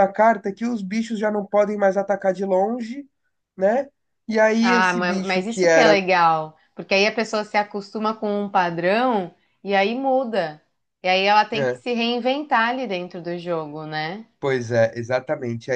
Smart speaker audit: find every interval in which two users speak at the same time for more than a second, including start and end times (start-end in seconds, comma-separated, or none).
4.6-6.0